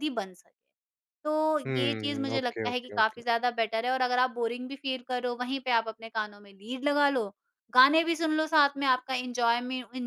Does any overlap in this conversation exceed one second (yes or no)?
yes